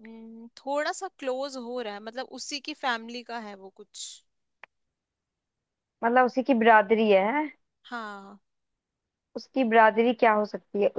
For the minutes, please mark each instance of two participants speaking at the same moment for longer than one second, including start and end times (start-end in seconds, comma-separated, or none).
none